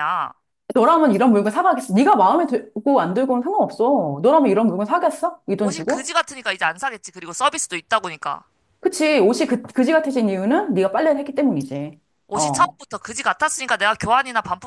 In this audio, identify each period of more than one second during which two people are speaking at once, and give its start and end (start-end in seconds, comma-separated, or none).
none